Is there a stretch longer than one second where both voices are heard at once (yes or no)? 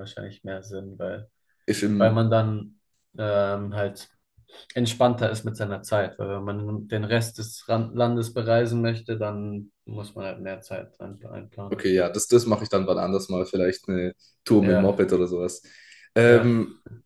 no